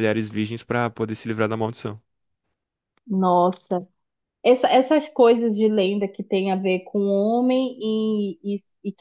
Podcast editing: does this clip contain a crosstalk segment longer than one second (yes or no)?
no